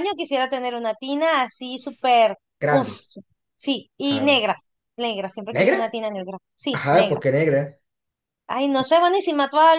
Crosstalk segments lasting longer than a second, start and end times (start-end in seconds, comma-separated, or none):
none